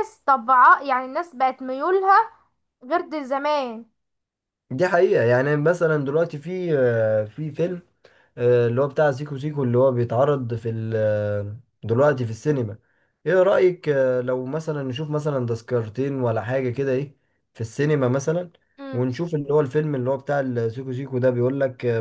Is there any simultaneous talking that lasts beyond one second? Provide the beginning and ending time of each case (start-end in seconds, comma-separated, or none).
none